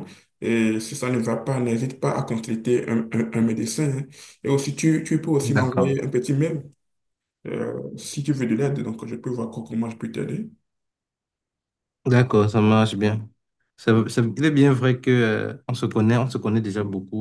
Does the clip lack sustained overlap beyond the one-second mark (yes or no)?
yes